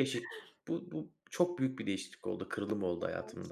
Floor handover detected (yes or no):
yes